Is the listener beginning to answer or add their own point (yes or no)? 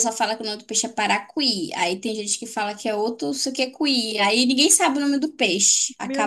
yes